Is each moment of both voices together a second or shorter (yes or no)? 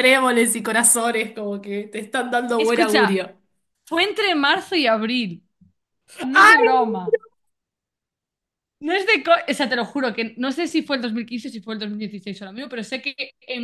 yes